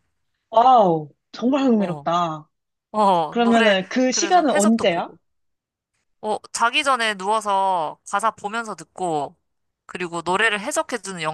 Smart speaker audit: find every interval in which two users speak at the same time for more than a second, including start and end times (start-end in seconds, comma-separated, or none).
3.3-5.1